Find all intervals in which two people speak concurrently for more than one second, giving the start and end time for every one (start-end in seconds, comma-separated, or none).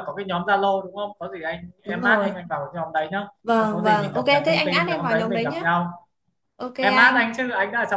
3.4-5.6